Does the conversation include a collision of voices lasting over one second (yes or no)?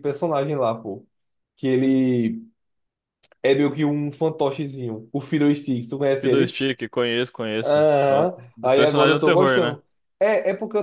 yes